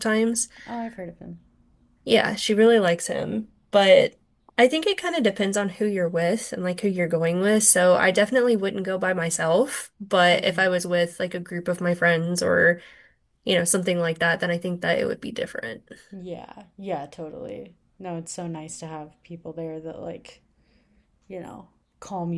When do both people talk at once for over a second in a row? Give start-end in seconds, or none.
none